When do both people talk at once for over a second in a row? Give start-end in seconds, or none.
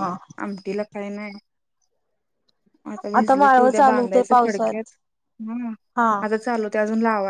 3.4-4.9